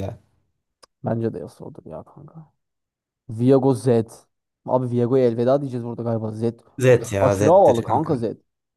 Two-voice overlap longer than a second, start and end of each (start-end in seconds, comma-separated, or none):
6.9-8.1